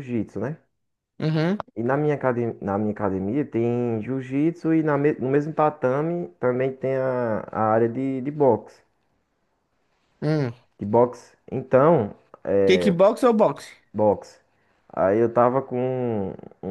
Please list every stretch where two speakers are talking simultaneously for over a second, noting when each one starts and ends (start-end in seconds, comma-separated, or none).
none